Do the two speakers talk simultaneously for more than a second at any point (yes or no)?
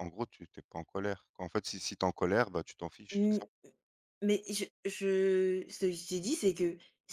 no